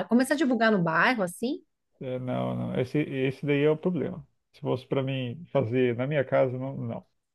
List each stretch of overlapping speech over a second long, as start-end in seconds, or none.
none